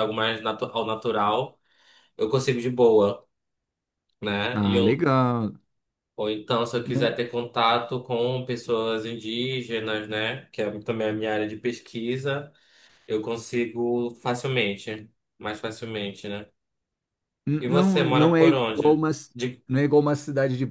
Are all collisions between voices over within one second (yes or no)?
no